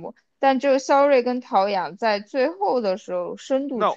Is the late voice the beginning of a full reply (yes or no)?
yes